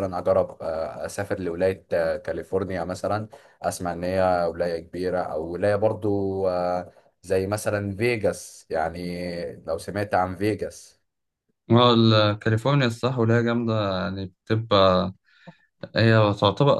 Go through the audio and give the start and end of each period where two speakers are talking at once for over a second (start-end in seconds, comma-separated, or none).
none